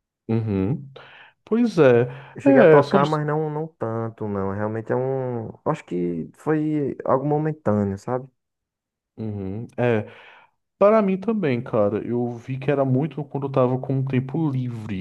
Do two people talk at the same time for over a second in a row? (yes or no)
no